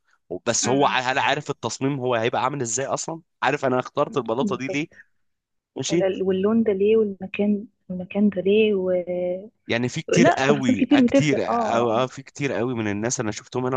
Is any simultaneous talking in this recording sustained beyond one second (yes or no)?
yes